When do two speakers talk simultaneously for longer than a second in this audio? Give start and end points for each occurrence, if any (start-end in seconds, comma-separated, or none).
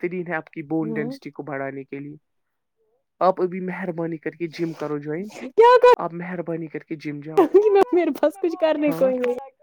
none